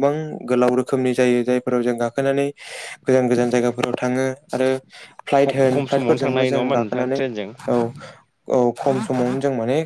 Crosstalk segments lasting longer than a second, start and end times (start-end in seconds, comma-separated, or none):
5.4-7.2